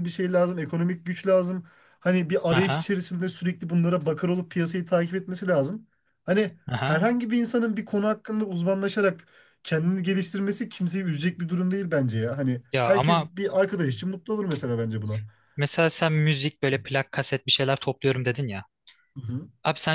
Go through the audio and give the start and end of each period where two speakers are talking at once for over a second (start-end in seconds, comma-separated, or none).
none